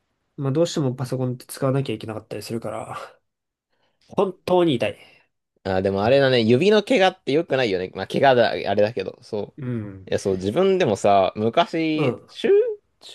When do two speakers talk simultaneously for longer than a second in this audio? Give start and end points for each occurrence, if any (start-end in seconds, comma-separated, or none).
none